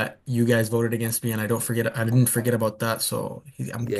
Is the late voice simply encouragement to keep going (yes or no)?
no